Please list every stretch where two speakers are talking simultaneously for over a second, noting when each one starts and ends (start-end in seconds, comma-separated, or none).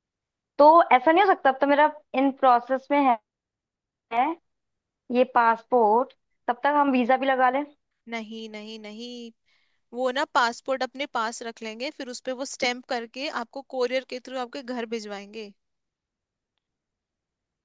none